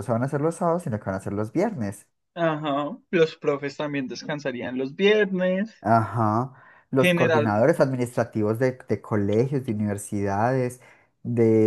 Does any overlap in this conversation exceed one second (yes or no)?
no